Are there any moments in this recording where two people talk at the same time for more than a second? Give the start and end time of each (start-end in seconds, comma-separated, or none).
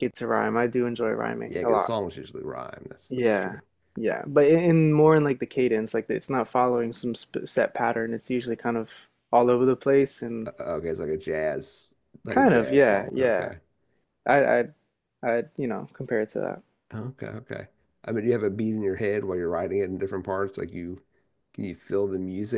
12.3-13.5